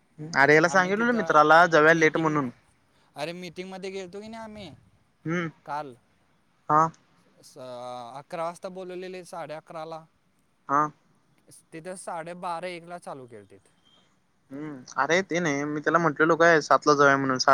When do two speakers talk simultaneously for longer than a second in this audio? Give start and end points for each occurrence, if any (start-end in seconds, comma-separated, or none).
0.7-2.4